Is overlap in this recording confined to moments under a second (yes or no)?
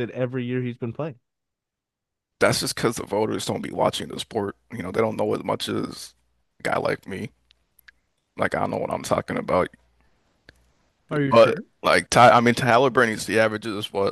yes